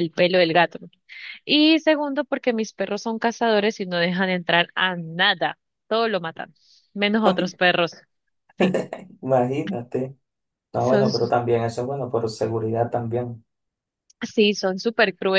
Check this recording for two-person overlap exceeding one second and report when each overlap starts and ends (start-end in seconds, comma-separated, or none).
none